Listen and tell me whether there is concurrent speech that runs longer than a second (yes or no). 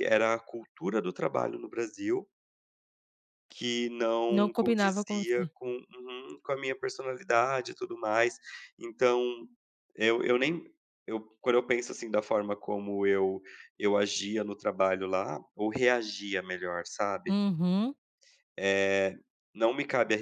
yes